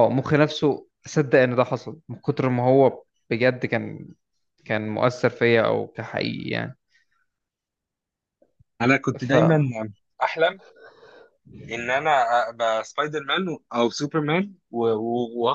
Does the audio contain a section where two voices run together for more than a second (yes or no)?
no